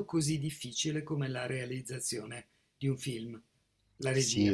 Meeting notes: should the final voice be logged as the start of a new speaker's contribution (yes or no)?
yes